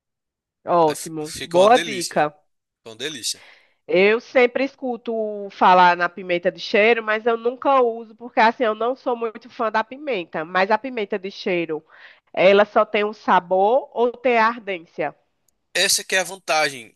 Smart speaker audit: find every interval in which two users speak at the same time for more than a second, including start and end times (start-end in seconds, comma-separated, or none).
0.8-2.2